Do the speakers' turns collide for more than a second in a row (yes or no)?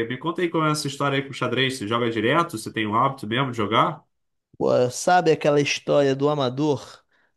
no